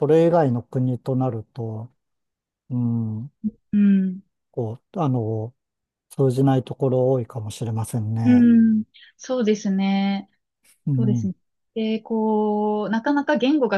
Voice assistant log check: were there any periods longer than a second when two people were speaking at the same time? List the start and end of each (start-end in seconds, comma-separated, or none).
none